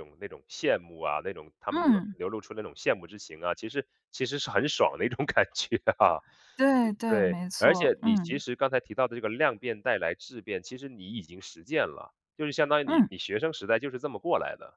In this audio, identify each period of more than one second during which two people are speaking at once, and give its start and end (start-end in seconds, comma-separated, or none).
7.1-8.4